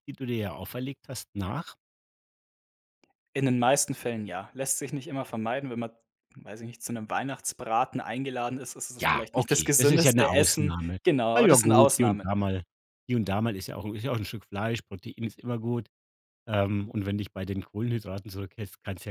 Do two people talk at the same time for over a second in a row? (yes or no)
yes